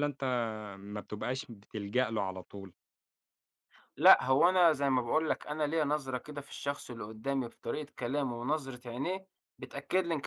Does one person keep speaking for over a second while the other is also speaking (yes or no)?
no